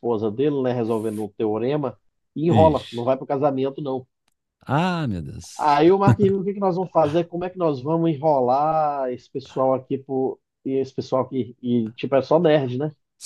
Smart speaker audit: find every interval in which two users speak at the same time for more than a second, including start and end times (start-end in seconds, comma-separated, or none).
none